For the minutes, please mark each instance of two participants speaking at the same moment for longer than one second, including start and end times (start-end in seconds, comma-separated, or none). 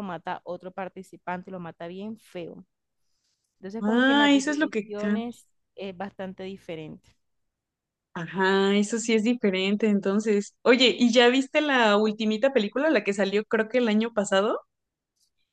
3.8-5.2